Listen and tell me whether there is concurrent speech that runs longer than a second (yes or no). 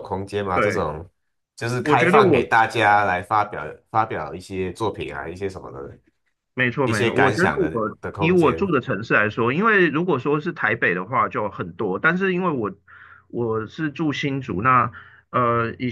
yes